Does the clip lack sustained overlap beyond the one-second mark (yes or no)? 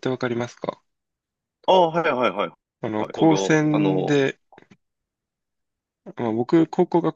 no